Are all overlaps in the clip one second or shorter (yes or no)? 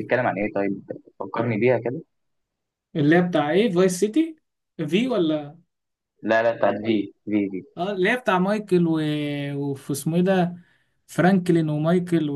yes